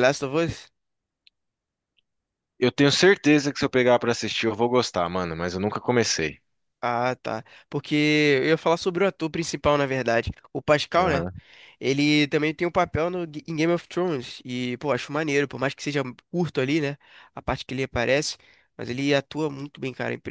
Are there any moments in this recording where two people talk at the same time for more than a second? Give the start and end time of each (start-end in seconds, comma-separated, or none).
none